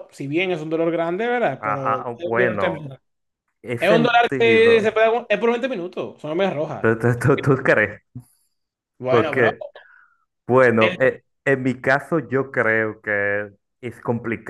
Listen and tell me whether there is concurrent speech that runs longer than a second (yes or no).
yes